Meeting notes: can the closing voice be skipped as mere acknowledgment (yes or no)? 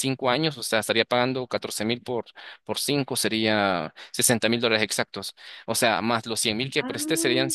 yes